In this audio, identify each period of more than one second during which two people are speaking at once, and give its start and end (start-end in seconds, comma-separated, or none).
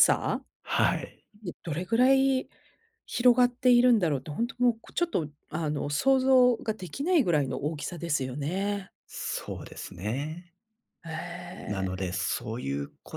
none